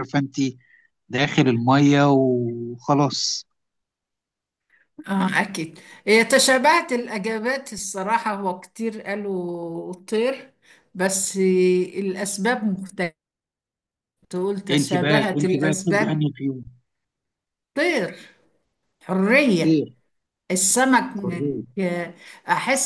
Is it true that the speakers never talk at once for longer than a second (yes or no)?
no